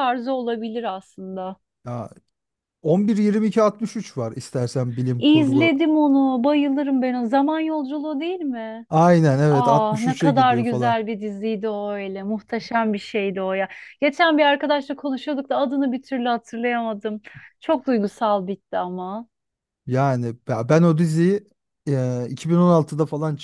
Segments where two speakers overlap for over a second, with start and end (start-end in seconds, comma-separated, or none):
9.5-10.9